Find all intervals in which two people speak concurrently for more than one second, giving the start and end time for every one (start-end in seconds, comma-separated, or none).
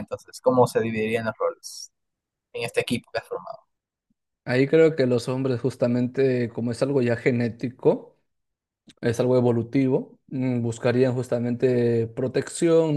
none